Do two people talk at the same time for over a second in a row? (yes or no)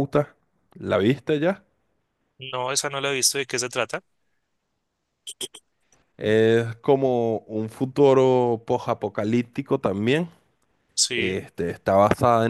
no